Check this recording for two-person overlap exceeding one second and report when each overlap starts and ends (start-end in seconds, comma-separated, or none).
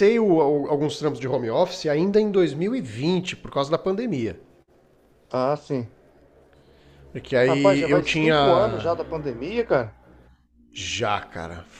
7.5-8.9